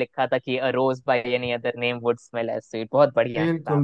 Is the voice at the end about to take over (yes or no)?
yes